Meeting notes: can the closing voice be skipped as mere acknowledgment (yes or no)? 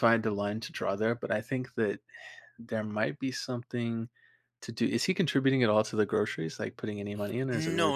no